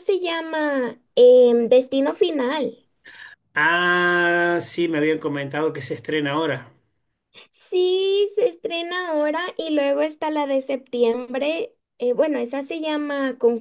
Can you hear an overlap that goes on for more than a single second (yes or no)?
no